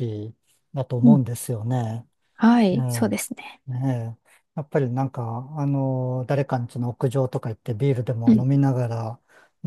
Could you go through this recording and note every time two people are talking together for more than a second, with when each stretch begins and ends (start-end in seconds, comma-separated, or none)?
none